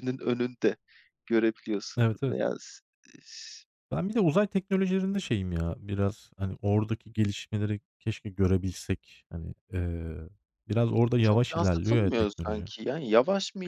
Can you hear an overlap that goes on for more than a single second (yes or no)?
yes